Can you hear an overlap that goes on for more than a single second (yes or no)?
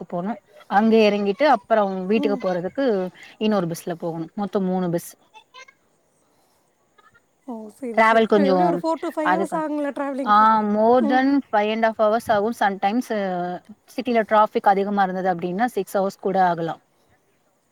no